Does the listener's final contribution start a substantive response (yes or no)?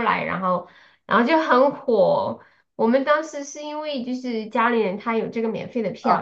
yes